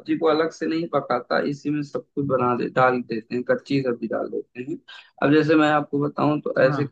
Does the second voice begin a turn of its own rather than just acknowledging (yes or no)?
no